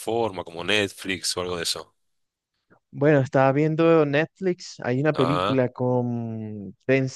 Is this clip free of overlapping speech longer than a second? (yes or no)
yes